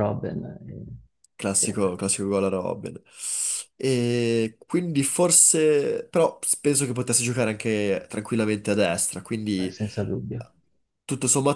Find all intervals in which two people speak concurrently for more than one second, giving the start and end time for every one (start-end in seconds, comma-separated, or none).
none